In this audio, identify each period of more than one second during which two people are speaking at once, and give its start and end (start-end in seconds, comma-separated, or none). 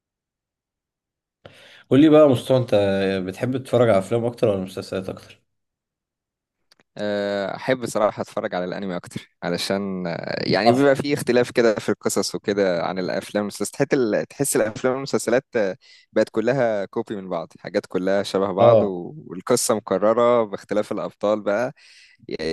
none